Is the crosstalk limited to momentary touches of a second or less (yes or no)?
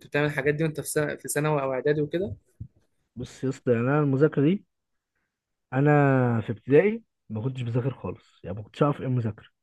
yes